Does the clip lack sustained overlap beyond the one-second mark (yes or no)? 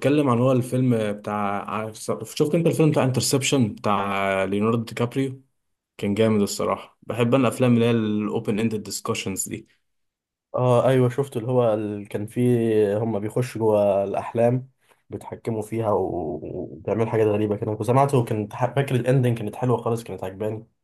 yes